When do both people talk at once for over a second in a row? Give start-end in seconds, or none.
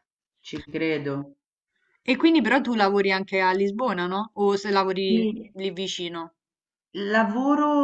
none